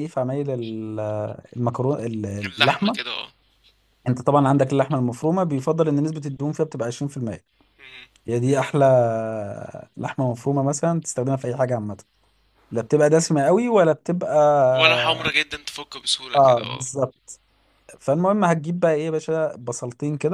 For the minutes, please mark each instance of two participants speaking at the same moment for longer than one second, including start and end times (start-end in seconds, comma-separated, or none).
none